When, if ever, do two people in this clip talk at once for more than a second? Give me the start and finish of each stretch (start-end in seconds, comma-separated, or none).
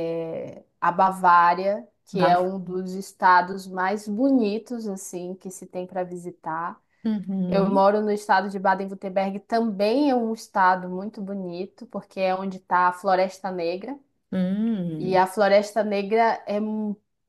none